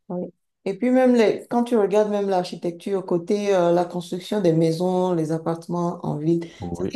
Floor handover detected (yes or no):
no